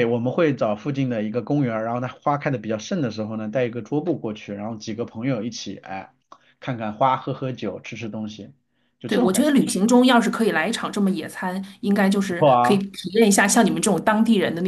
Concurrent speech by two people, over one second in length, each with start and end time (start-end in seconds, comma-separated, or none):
none